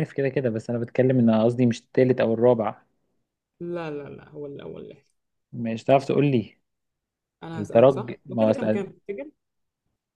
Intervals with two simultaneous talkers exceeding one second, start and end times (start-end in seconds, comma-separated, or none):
7.5-8.8